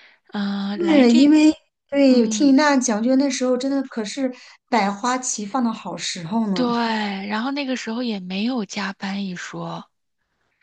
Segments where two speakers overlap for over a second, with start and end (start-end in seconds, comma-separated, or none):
none